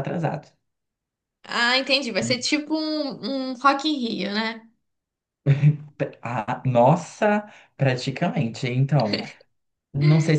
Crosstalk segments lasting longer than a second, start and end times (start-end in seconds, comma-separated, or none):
none